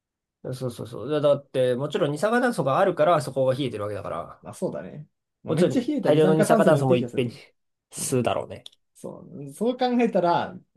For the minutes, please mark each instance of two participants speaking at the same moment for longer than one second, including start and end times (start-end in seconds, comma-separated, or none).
5.5-7.3